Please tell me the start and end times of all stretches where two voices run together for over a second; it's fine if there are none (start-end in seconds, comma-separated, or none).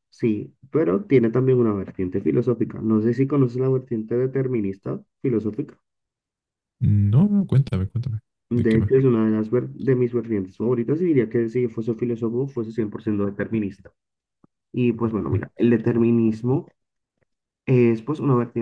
none